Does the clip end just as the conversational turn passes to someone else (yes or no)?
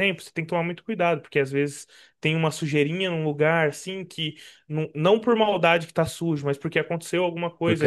no